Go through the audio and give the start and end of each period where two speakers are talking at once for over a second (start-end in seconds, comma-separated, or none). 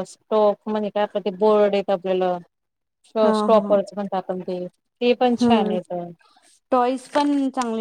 none